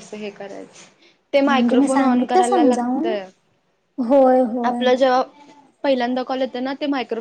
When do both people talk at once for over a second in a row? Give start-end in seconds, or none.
1.5-3.2